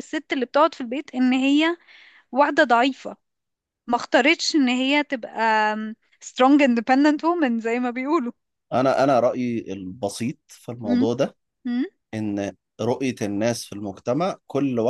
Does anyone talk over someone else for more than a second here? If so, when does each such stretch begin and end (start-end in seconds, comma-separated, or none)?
none